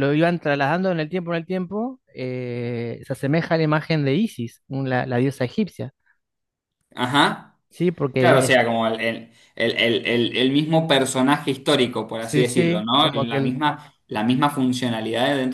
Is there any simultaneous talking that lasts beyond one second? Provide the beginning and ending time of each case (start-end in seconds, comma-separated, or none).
12.2-13.6